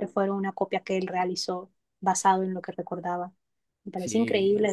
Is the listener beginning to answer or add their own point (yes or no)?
yes